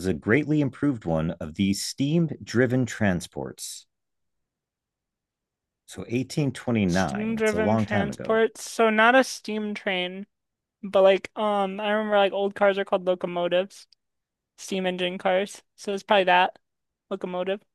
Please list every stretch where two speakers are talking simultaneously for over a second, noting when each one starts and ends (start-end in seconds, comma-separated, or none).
6.9-8.4